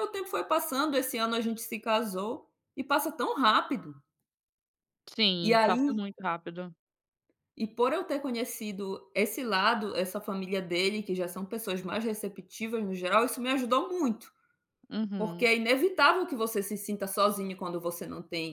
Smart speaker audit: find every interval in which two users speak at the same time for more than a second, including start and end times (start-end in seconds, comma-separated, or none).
none